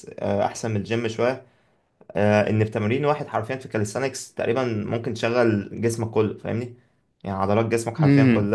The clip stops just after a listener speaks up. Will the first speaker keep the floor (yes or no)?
yes